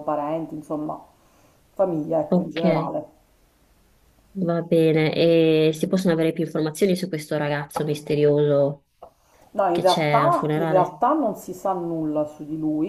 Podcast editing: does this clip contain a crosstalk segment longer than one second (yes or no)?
yes